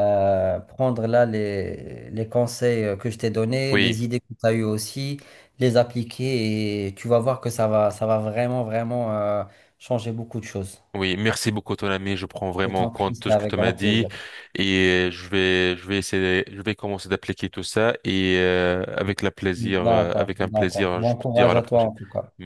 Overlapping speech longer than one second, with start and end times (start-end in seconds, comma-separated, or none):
12.7-14.1, 19.6-21.9